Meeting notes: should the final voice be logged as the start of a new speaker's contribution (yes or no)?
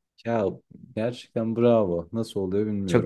yes